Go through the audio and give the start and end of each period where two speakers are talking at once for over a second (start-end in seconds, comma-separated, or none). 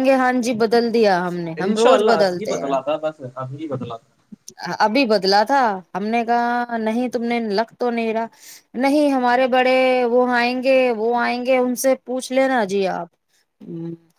none